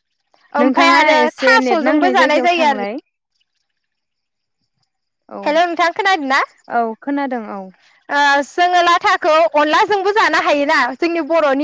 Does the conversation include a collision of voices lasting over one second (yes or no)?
yes